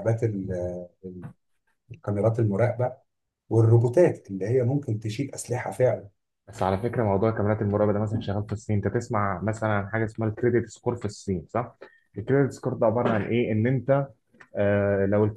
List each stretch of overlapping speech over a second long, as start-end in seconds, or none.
none